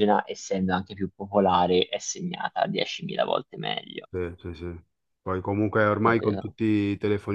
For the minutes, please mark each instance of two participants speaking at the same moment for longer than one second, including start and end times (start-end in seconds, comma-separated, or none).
none